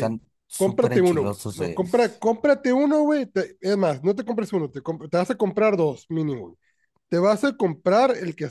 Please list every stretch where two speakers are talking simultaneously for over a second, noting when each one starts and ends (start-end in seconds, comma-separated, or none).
0.6-1.8